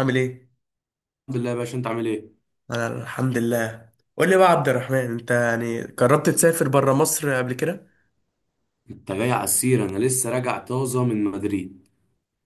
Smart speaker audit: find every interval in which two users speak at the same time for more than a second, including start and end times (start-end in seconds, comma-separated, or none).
none